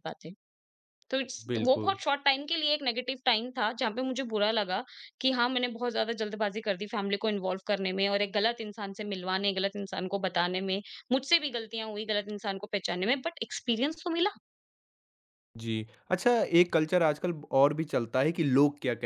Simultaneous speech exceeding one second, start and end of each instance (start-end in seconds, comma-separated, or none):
none